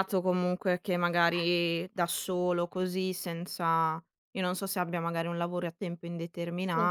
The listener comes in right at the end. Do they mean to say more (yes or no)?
no